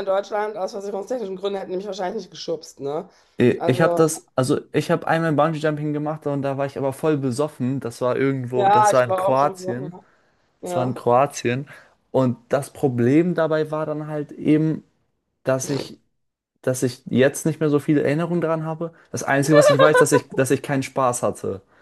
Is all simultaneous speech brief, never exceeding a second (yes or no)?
no